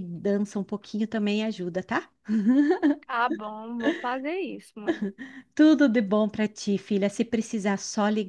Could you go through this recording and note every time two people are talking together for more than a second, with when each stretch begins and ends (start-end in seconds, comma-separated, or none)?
none